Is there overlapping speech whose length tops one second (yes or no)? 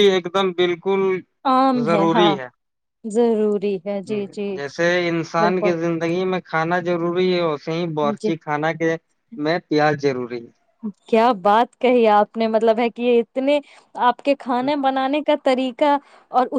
no